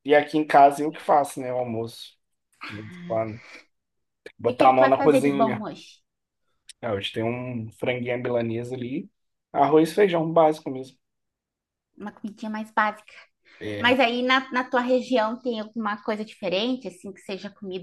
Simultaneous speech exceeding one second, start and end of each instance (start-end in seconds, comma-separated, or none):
4.4-5.7